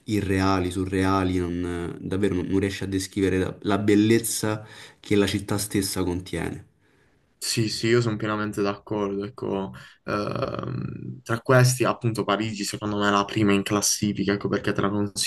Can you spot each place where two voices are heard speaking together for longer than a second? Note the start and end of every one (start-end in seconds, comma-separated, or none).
none